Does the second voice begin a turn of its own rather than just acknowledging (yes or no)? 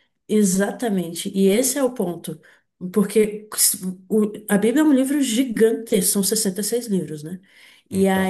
no